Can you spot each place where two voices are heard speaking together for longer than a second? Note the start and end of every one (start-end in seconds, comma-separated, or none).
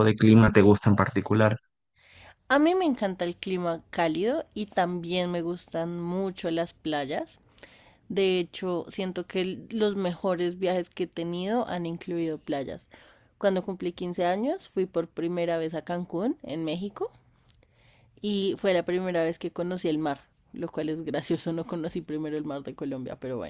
none